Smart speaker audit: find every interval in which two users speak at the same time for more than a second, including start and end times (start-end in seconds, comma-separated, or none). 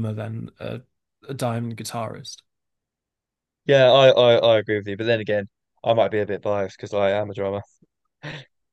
none